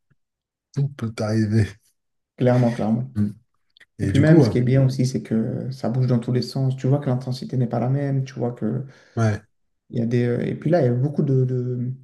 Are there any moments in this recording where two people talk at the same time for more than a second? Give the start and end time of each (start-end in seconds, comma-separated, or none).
none